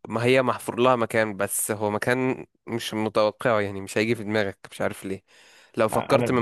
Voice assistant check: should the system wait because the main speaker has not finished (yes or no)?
yes